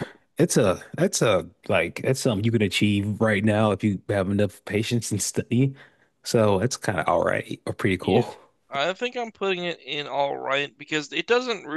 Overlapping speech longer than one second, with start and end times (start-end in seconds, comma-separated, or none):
none